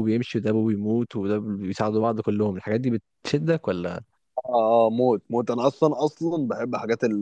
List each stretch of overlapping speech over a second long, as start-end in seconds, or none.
none